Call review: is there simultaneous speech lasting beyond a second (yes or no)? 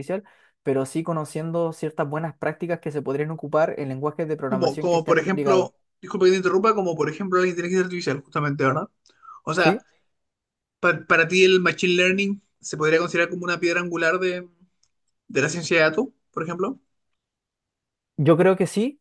yes